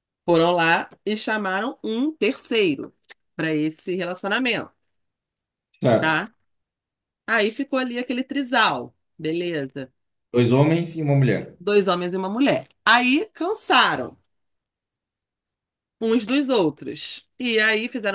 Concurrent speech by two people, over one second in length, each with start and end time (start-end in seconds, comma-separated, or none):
none